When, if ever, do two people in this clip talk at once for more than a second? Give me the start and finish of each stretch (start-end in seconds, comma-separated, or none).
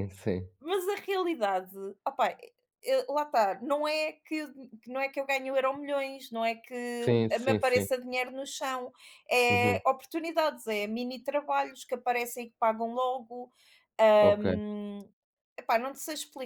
none